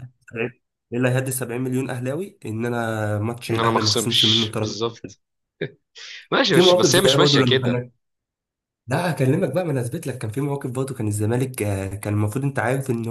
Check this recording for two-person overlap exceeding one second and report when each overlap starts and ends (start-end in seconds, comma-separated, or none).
3.5-5.1, 6.5-7.8